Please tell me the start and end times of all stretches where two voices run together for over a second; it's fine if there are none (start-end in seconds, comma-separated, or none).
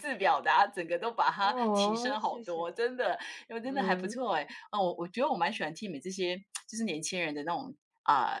1.4-2.7